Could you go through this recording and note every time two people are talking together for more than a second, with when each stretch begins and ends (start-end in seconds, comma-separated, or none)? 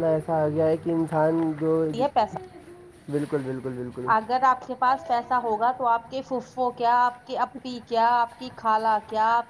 none